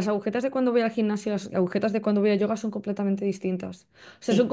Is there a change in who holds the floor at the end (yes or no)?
no